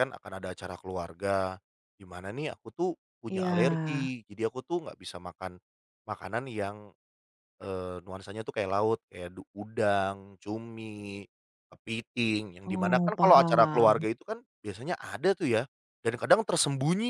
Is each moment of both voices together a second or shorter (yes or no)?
no